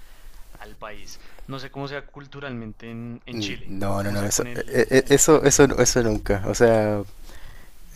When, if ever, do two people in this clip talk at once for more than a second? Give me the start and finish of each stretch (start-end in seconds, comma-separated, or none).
3.3-5.7